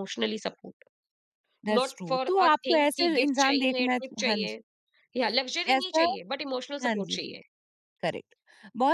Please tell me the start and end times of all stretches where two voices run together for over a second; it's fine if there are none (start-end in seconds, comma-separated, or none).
1.8-4.6